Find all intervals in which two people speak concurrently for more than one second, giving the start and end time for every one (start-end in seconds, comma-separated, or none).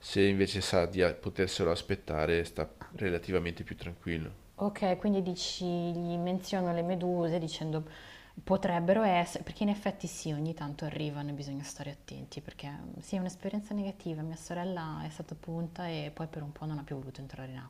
none